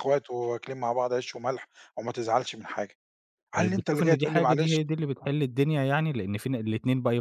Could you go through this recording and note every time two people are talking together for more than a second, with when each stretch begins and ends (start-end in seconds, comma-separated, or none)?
3.5-4.8